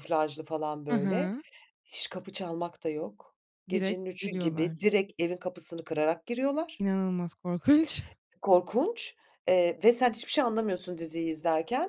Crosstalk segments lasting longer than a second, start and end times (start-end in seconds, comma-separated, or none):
3.7-4.9